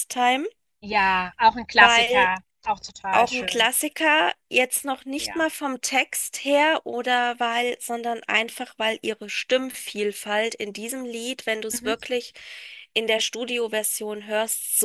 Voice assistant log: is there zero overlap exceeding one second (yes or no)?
yes